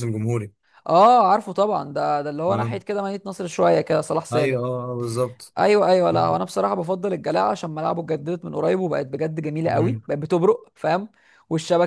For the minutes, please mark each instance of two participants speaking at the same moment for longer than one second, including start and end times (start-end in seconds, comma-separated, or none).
none